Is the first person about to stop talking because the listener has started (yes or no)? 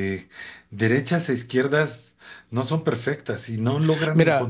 no